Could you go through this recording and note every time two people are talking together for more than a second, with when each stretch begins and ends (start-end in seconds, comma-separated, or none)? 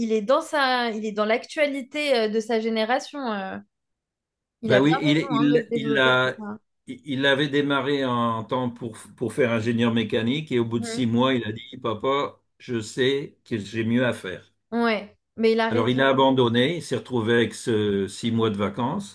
4.6-6.3